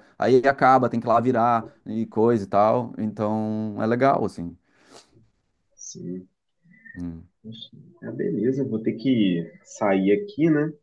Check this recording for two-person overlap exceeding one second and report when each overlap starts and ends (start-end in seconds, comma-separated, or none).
none